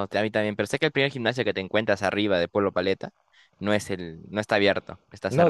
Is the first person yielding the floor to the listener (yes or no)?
yes